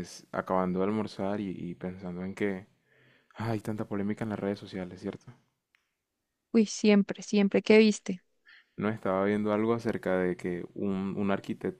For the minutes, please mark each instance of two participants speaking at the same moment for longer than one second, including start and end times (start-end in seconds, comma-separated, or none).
none